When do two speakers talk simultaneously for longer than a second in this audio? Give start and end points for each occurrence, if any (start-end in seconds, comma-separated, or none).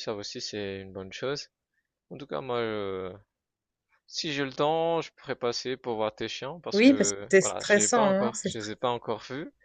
6.7-8.5